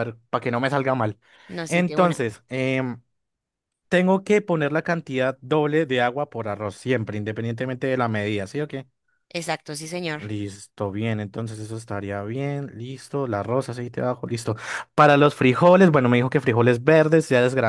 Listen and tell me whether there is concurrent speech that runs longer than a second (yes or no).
no